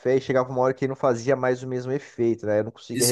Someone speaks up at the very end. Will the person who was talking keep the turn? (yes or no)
no